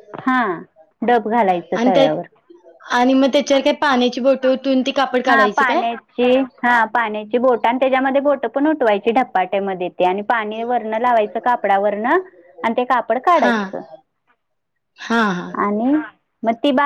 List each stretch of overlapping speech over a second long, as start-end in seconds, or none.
none